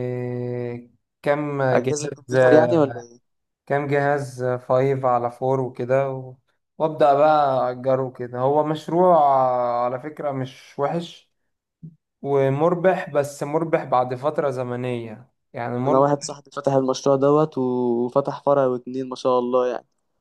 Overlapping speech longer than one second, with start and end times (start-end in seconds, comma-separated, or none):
1.7-2.9